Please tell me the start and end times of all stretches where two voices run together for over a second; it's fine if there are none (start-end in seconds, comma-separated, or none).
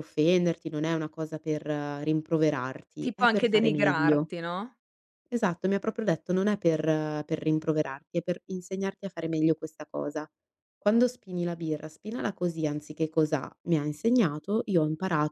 3.0-4.3